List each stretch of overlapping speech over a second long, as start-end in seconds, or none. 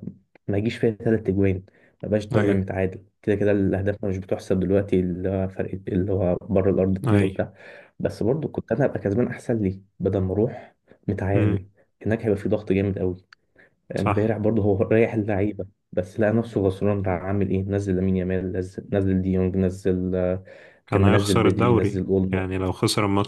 20.9-22.4